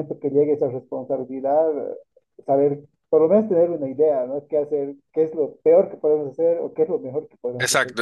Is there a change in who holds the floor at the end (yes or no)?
yes